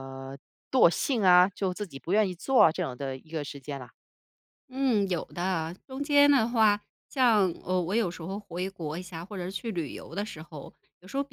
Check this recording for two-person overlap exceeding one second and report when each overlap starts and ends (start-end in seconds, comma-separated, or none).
none